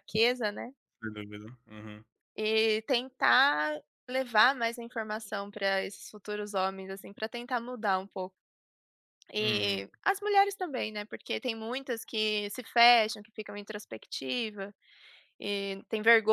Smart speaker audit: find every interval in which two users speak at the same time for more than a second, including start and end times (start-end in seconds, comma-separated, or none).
none